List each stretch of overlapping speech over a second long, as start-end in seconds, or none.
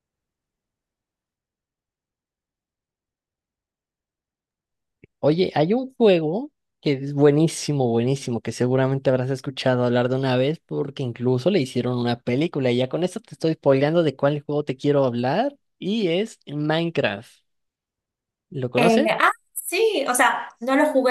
none